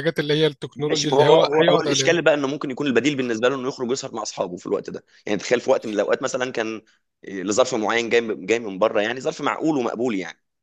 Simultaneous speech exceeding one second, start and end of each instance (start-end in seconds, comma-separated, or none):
0.8-2.2